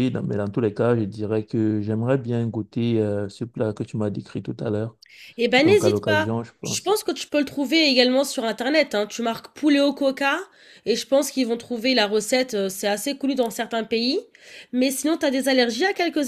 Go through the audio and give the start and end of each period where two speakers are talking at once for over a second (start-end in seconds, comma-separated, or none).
5.6-6.9